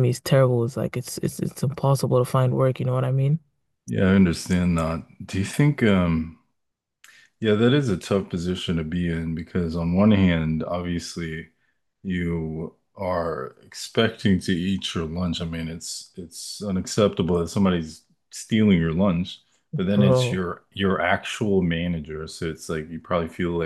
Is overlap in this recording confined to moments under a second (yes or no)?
yes